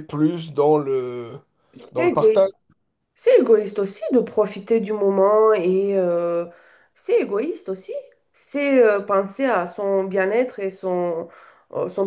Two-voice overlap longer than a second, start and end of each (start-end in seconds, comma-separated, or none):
none